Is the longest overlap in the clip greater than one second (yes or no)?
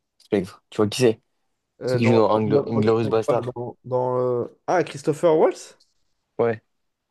yes